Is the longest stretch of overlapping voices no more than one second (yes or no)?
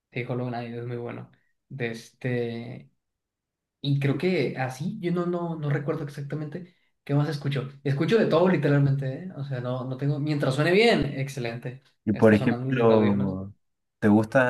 no